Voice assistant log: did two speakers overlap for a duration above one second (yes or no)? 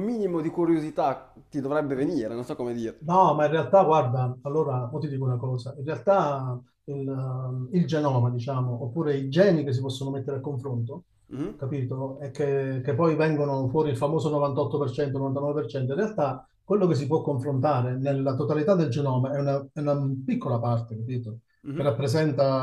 no